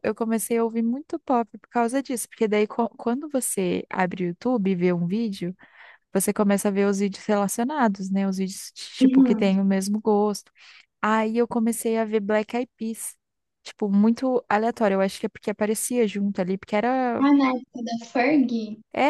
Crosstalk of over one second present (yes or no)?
no